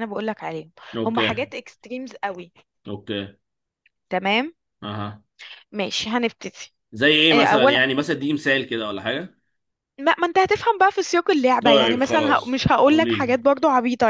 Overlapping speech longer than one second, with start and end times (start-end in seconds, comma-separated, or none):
11.6-13.4